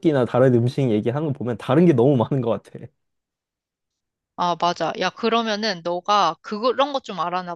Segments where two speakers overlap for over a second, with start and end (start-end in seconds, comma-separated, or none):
none